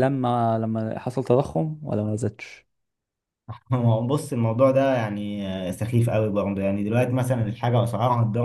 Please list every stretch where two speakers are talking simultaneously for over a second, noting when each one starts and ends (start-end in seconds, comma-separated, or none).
none